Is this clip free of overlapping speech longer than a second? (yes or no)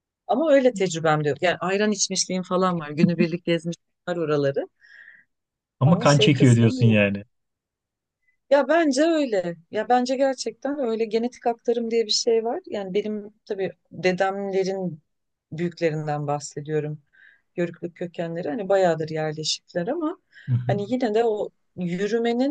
no